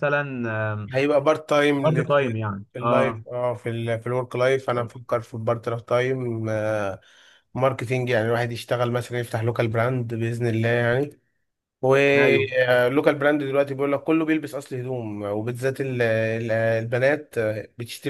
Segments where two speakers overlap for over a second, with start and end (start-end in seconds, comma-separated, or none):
none